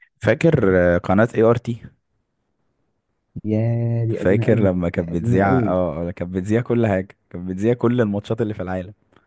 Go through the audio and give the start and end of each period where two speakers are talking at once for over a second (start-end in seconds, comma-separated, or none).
4.1-5.7